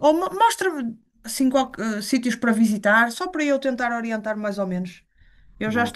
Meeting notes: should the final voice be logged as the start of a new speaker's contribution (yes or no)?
no